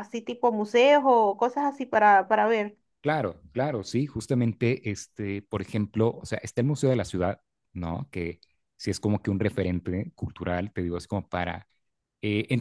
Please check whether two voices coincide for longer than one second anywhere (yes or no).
no